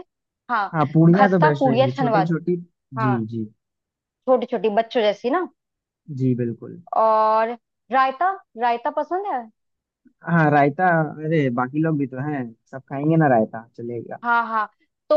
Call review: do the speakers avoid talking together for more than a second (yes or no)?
no